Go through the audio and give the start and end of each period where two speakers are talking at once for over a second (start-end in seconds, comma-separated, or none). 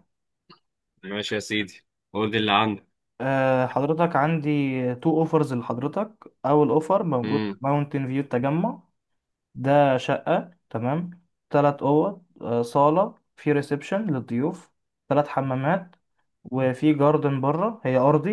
none